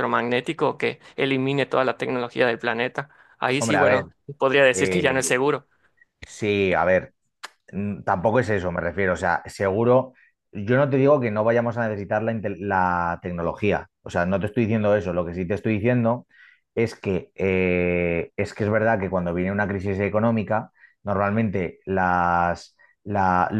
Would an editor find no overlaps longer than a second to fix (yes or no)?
yes